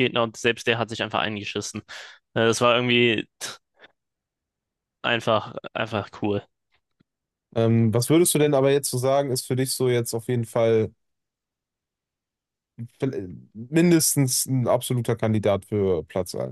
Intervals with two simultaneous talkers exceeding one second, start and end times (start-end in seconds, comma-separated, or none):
none